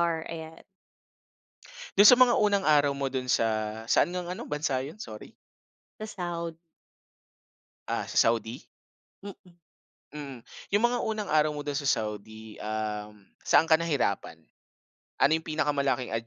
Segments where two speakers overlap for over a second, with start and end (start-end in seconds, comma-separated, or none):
none